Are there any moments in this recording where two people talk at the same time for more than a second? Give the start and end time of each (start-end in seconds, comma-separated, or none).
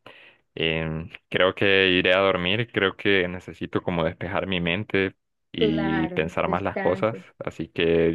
5.5-7.2